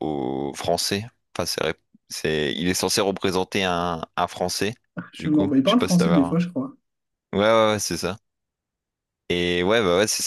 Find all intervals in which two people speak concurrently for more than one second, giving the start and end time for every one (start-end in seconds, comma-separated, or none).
5.2-6.4